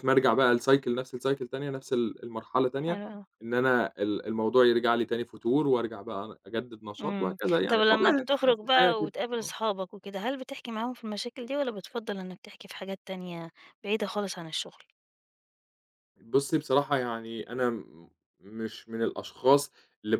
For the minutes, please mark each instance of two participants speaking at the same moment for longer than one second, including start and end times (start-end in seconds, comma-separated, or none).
7.0-9.5